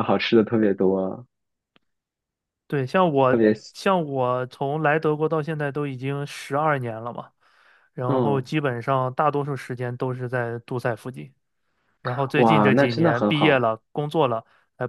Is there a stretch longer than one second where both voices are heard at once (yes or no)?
yes